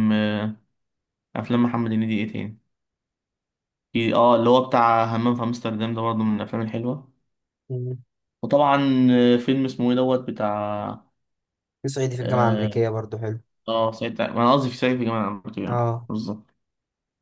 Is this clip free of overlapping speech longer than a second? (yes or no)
yes